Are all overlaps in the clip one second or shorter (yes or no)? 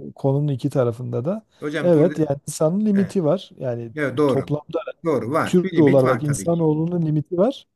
no